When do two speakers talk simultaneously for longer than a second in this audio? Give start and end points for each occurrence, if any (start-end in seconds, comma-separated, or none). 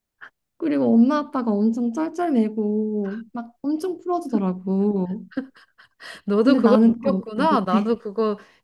6.4-7.9